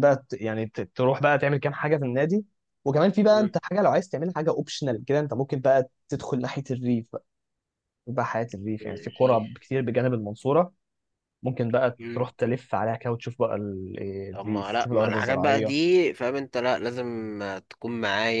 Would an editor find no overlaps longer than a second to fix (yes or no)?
no